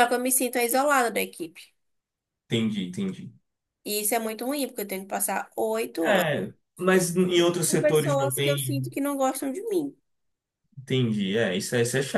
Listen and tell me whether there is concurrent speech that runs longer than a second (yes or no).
yes